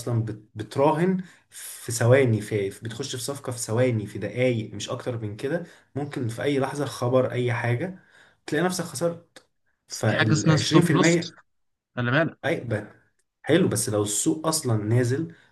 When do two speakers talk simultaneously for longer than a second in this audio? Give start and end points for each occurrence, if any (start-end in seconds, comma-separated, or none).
9.9-11.2